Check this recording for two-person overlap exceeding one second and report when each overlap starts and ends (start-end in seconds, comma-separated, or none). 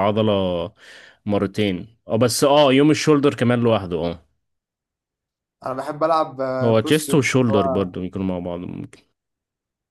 6.6-7.9